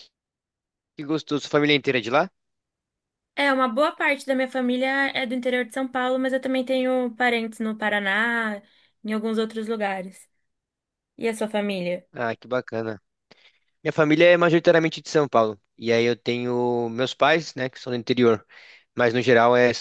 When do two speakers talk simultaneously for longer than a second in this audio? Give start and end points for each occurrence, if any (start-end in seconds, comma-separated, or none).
none